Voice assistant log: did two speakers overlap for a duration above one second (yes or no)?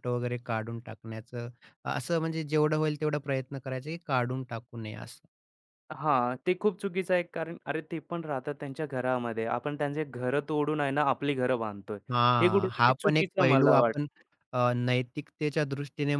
yes